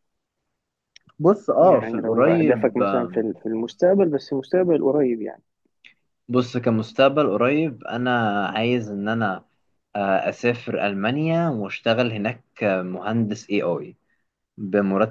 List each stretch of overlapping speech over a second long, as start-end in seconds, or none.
1.6-3.3